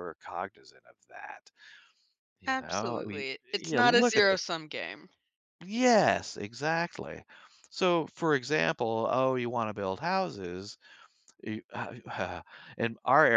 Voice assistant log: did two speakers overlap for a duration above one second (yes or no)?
yes